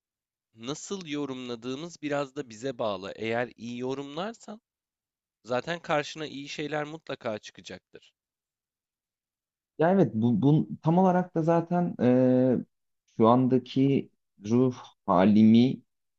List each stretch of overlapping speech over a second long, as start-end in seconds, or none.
none